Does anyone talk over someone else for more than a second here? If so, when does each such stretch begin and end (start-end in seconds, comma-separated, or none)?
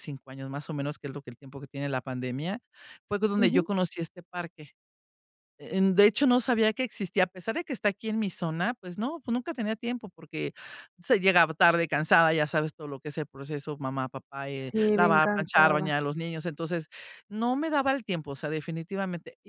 14.6-16.0